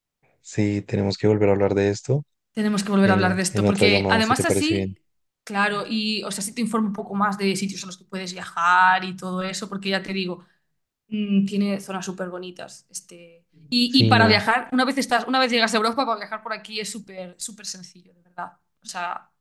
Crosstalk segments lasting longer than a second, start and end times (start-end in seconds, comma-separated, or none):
3.0-5.0